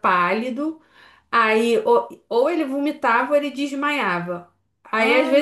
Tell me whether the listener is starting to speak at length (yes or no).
no